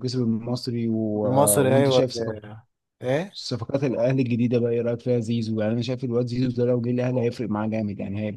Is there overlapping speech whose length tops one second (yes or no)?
no